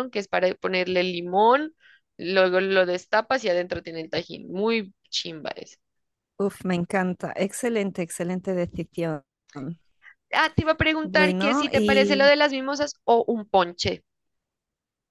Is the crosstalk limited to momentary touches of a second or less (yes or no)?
no